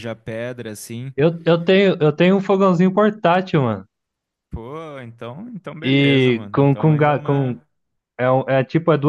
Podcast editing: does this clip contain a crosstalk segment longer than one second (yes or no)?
yes